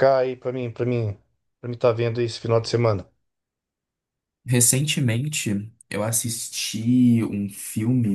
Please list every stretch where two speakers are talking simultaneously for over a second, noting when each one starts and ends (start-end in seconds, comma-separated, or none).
none